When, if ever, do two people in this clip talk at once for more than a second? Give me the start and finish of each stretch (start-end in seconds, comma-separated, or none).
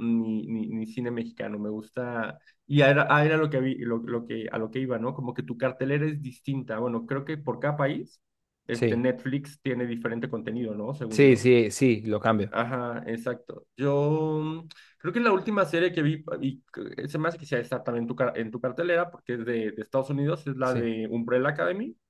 none